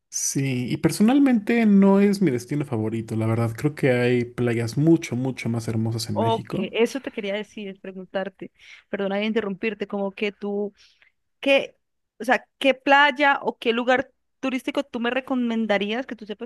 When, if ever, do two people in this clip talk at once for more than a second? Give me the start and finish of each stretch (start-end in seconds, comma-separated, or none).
none